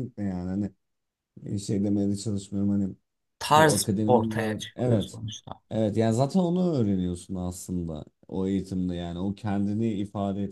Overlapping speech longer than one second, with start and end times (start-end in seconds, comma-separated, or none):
3.5-5.2